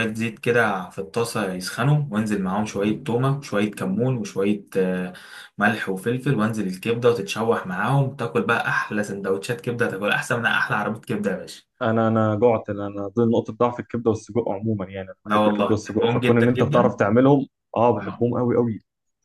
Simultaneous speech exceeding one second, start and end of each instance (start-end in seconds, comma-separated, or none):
15.2-17.0